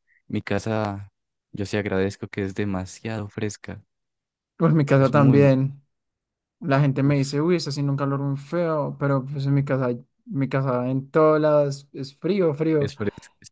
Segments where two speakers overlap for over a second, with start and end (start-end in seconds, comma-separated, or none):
none